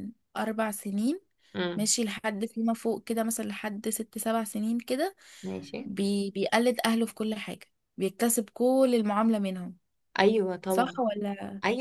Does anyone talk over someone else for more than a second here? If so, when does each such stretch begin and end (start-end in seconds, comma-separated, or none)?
none